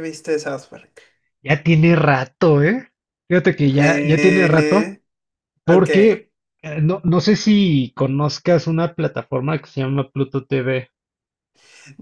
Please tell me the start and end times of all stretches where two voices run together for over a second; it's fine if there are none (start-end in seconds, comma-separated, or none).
3.7-4.9